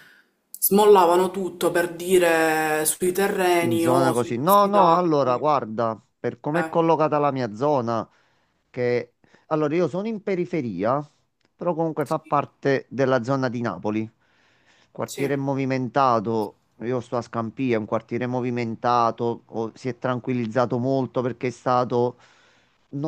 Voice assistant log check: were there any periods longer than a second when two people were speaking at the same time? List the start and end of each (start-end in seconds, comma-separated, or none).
3.6-5.0